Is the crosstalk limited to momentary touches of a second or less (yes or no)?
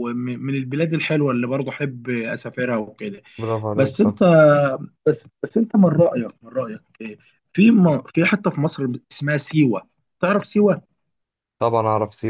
yes